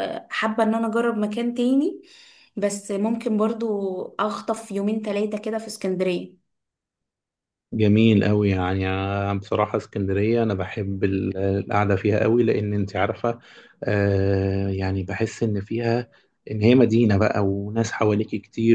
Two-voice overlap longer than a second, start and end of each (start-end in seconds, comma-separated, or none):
none